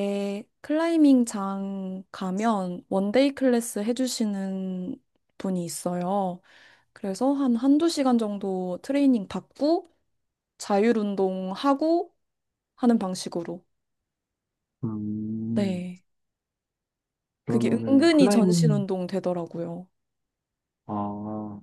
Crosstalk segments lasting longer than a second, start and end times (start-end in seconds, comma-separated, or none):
17.5-18.8